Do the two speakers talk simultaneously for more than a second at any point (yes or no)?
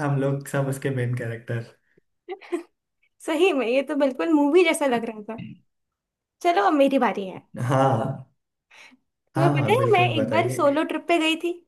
yes